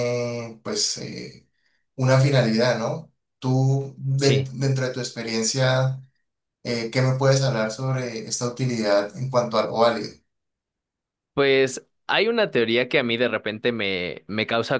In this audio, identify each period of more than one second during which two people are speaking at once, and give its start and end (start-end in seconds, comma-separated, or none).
none